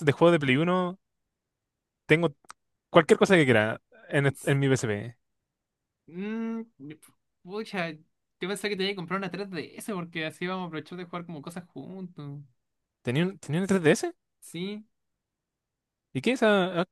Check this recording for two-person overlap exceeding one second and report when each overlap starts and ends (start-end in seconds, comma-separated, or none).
none